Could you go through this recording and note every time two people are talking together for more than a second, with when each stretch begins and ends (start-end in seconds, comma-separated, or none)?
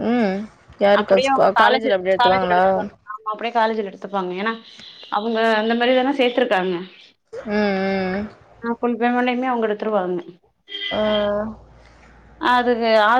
1.0-2.6